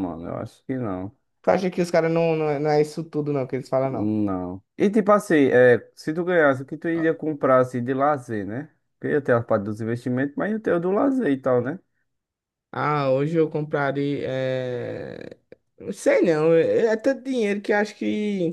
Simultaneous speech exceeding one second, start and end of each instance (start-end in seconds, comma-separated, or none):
none